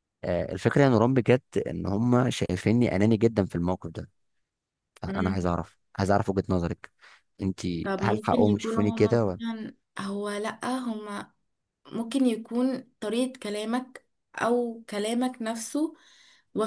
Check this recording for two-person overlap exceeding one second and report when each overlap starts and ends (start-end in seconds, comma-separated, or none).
8.0-9.4